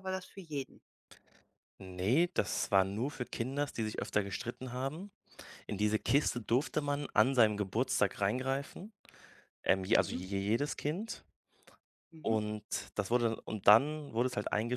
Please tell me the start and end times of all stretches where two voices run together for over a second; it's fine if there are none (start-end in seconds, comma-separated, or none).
none